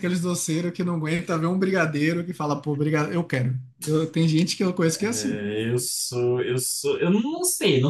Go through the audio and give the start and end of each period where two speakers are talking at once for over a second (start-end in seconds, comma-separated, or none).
none